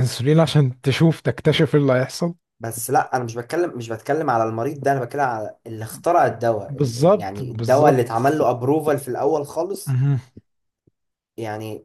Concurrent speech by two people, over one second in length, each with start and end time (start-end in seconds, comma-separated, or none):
6.7-8.2